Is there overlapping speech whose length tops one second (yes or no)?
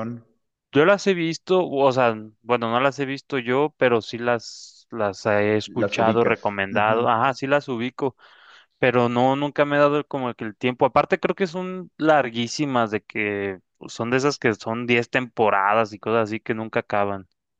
yes